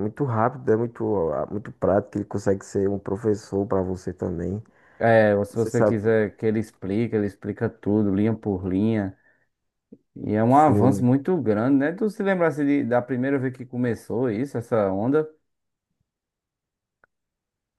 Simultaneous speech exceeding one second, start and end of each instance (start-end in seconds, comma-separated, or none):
none